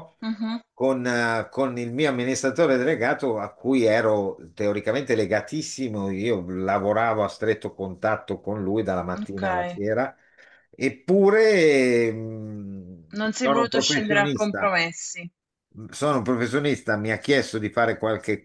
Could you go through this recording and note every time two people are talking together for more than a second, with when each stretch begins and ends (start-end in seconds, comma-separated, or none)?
13.4-14.7